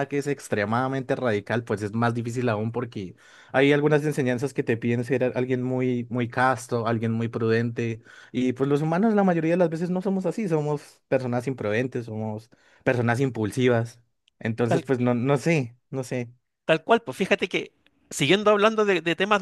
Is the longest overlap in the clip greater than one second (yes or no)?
no